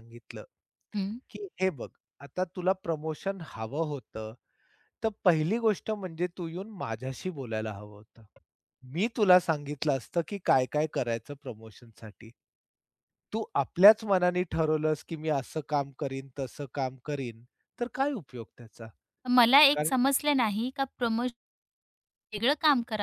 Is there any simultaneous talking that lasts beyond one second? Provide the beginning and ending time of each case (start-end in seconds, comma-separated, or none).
none